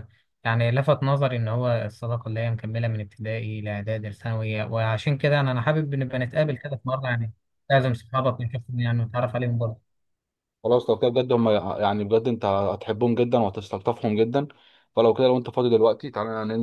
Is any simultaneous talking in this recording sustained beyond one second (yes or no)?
no